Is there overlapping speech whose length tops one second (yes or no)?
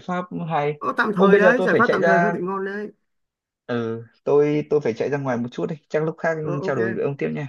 yes